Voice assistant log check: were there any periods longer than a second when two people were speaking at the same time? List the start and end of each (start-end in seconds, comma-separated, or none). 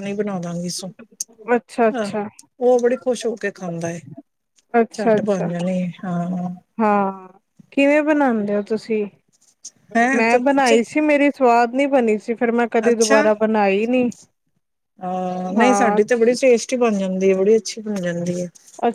none